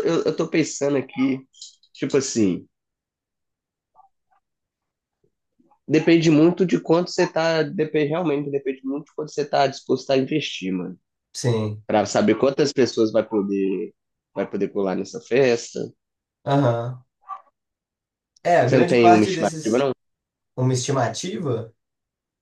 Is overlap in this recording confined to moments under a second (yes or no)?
no